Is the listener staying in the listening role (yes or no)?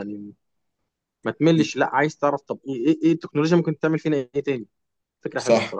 no